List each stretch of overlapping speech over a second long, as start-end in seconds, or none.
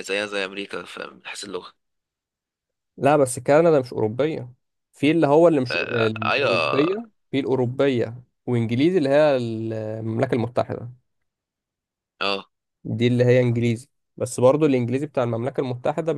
5.7-7.1